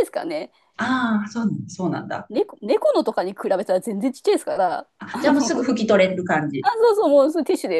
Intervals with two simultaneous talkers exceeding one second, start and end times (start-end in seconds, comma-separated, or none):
none